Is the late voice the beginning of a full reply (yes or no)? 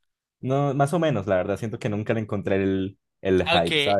yes